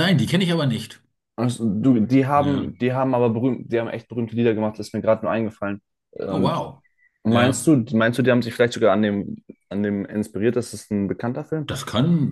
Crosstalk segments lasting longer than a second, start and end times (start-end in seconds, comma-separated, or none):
none